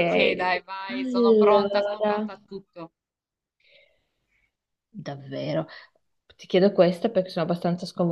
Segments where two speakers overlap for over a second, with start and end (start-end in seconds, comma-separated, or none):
0.9-2.1